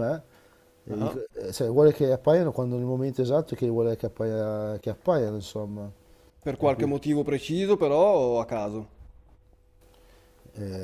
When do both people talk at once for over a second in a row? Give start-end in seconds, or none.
none